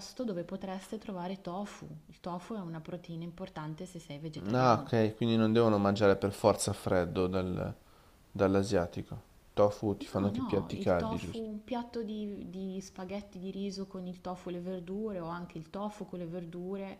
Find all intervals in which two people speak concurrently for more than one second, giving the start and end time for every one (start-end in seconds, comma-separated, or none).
10.0-11.5